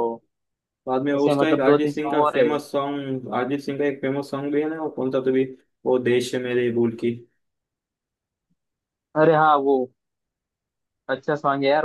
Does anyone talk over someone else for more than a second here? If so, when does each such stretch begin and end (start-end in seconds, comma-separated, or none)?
1.2-2.5